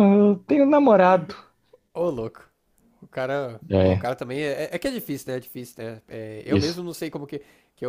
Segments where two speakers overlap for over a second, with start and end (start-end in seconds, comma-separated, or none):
none